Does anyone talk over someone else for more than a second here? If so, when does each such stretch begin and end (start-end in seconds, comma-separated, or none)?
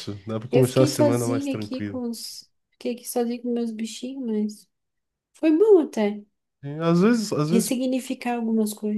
0.5-2.0